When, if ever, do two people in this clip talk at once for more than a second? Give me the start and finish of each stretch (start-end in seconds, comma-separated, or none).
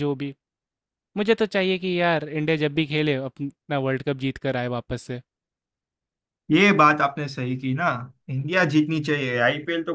none